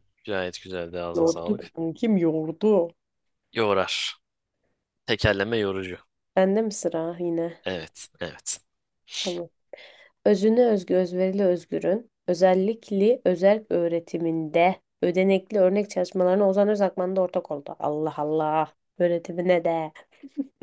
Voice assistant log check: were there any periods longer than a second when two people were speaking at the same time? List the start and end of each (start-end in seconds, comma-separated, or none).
none